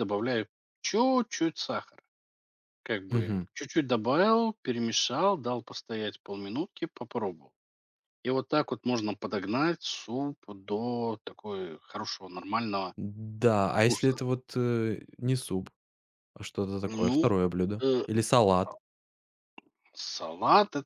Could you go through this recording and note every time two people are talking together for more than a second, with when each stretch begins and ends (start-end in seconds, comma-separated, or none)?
none